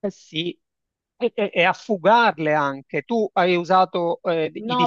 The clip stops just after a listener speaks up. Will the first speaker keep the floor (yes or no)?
no